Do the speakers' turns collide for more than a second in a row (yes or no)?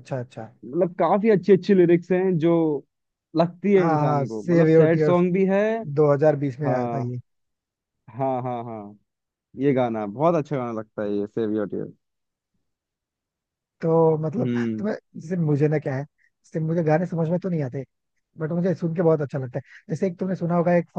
yes